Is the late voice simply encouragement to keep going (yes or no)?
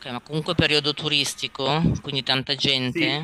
no